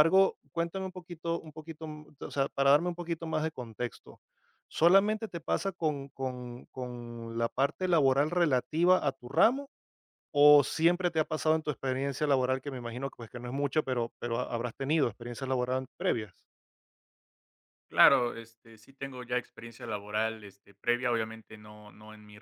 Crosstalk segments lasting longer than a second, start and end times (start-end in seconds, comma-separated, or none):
none